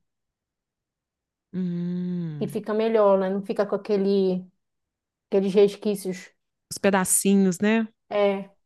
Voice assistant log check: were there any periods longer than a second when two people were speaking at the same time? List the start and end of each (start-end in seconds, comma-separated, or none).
none